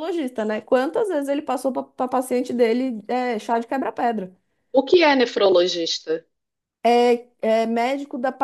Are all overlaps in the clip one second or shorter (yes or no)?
yes